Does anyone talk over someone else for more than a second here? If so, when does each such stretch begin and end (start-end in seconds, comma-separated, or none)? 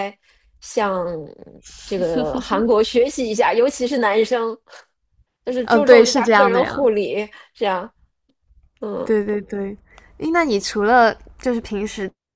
5.6-6.8